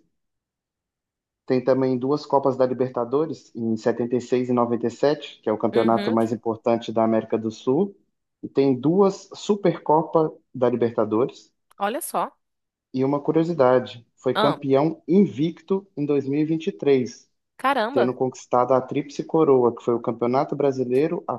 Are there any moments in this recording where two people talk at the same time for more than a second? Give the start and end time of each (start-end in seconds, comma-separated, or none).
none